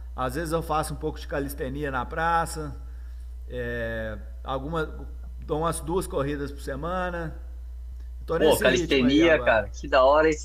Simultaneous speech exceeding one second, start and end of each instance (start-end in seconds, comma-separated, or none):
8.3-9.6